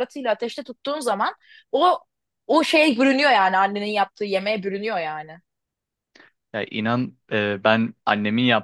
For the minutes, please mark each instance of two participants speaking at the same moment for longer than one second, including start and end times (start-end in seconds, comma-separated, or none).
none